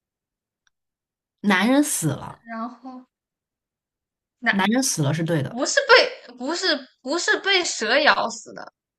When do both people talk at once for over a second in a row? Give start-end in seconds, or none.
none